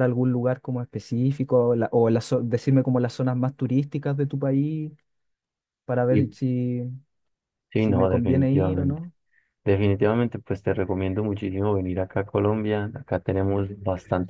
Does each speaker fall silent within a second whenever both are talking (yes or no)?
no